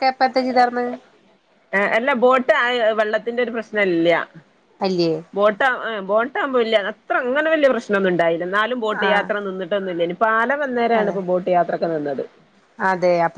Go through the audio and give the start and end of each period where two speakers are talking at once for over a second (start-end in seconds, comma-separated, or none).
none